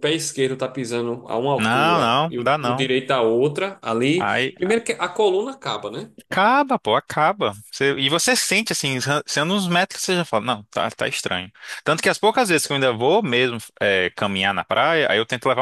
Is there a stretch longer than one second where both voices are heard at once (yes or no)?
yes